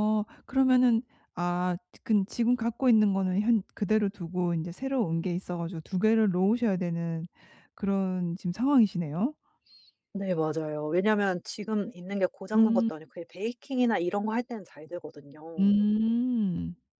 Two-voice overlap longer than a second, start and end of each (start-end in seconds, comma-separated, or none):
none